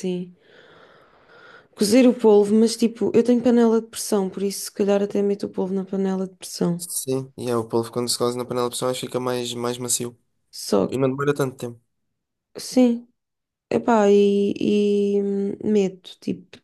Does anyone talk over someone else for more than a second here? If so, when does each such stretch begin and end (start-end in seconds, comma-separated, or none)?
none